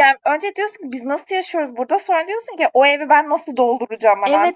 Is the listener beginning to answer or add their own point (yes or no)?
yes